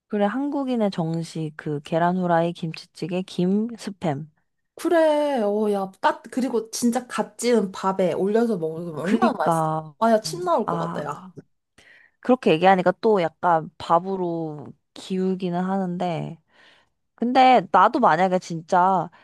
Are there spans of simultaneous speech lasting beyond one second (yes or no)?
yes